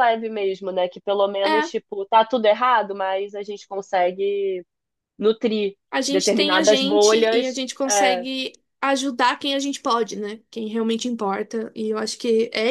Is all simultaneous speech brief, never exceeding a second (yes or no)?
no